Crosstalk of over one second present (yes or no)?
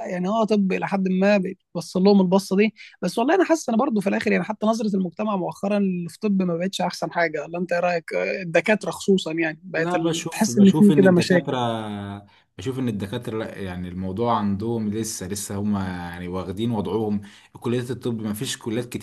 yes